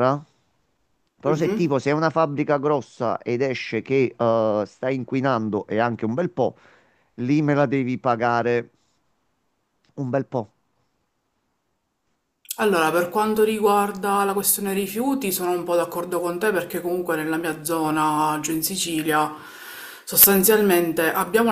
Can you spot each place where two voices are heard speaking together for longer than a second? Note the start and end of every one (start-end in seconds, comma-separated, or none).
none